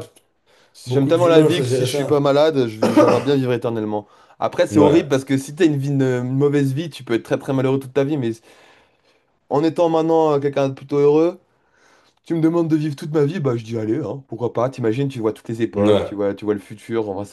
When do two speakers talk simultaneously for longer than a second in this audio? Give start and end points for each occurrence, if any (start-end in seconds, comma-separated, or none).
0.9-2.2